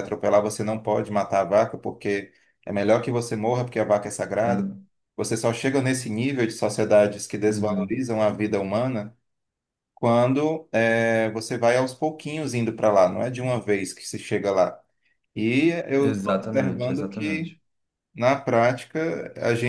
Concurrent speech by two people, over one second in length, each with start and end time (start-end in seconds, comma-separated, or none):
16.0-17.6